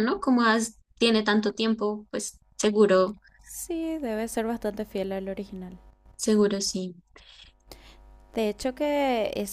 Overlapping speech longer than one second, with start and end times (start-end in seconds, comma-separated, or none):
none